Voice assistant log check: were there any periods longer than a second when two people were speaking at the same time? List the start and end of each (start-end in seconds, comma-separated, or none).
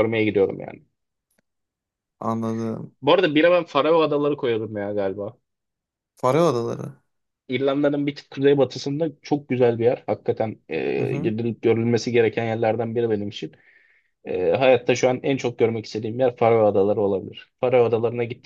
none